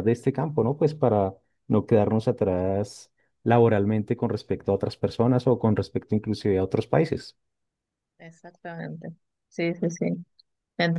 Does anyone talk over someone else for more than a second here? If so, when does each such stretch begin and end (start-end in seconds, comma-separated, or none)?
none